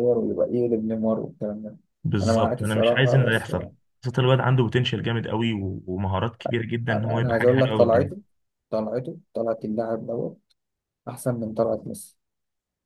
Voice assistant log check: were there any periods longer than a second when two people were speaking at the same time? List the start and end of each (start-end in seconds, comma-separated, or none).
2.2-3.5, 6.9-8.1